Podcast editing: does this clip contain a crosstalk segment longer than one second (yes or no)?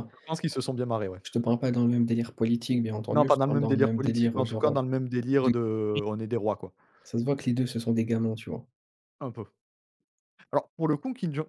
yes